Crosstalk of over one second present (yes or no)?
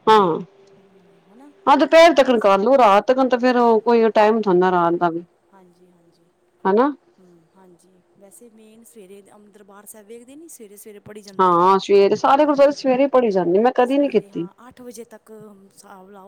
no